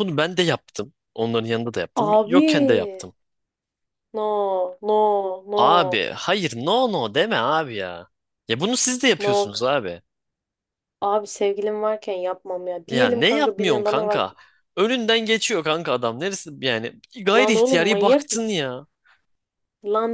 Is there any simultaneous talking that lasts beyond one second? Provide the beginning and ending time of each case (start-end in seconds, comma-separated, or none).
12.9-14.2, 17.4-18.6